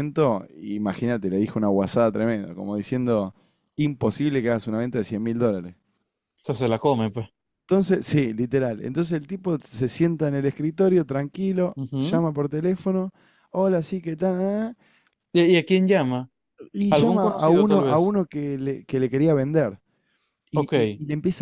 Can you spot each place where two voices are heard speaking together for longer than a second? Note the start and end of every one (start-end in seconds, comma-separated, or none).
16.9-18.2